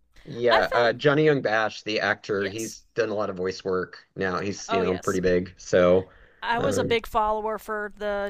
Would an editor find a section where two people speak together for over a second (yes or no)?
no